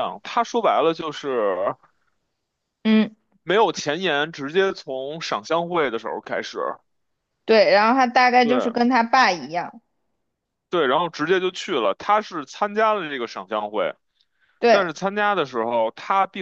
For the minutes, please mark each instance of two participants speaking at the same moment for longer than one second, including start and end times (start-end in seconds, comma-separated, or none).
none